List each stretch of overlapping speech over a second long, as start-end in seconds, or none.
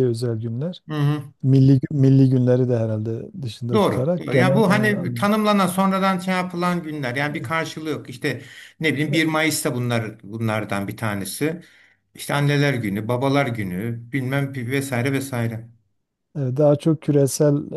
3.7-5.3